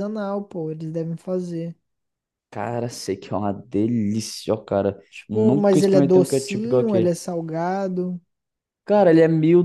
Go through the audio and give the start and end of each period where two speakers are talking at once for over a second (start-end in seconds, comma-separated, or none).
5.1-7.1